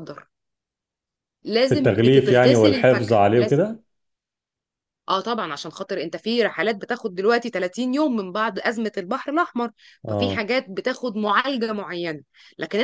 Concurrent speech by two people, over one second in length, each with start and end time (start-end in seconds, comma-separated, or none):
1.7-3.6